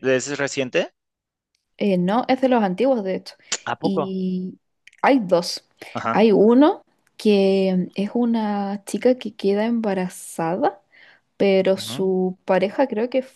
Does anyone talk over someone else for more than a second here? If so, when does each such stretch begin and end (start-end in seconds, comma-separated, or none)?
none